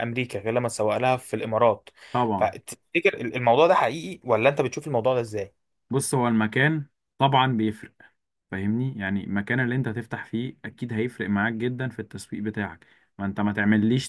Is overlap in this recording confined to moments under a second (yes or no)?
yes